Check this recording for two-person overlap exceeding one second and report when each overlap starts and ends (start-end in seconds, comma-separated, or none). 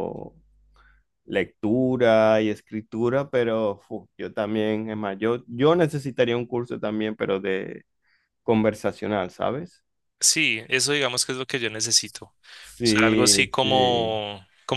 12.8-14.2